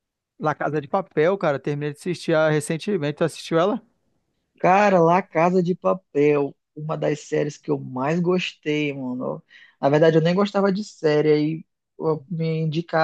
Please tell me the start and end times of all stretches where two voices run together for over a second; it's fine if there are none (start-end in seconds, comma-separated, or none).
none